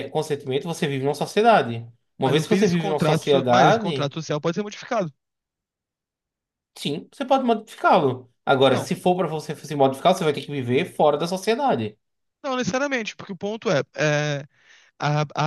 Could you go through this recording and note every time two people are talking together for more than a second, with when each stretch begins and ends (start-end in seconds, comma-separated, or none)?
2.2-4.1